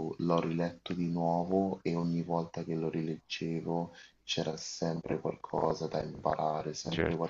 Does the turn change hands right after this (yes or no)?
no